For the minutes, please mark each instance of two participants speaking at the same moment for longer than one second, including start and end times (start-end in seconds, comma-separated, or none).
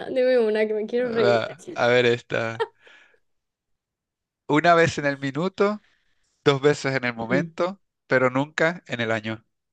none